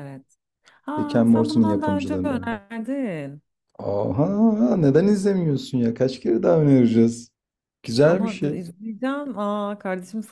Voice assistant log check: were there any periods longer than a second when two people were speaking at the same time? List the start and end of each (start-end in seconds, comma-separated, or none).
1.0-2.5